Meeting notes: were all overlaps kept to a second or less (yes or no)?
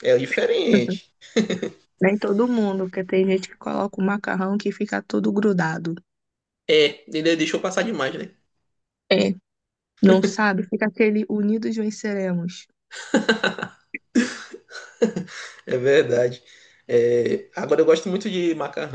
yes